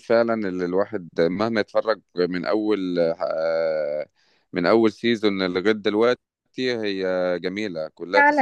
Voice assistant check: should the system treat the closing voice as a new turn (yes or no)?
yes